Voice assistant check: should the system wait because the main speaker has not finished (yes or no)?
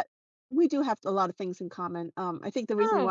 yes